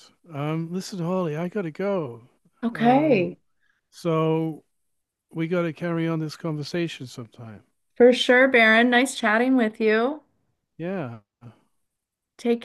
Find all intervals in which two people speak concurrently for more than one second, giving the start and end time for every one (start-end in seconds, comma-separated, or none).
none